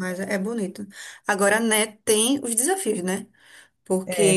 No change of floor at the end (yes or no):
yes